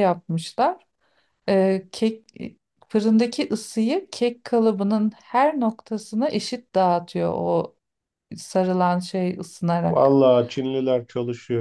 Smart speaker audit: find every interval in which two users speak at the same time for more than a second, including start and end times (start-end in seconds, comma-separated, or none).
none